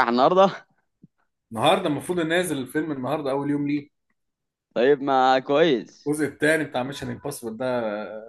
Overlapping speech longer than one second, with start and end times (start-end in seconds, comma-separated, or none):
none